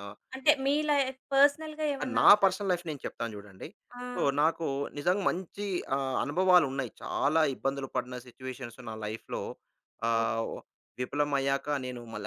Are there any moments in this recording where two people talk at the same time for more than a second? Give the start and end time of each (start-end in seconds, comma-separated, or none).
none